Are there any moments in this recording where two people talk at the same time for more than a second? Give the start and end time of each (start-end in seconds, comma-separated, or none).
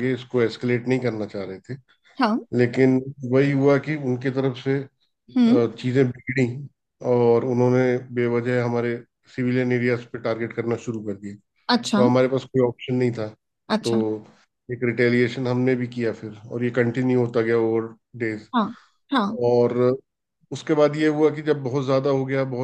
none